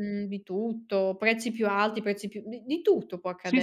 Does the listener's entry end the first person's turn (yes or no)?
yes